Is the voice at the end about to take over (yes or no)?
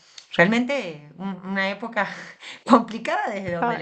no